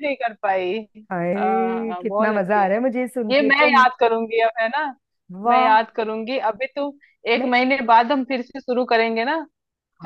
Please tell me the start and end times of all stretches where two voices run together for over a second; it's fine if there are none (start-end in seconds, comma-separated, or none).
1.4-2.7